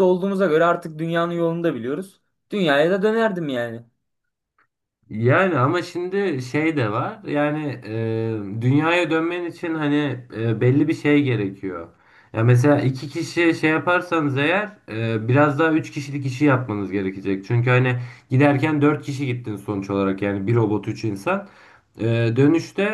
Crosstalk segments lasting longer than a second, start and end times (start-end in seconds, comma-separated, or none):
none